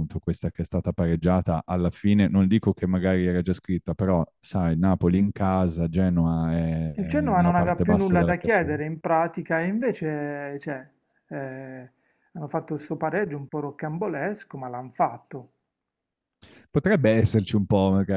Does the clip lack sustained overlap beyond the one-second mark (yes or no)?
no